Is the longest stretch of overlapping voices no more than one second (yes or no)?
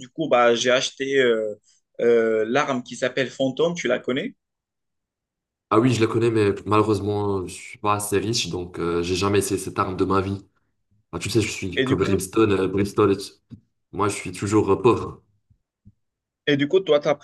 yes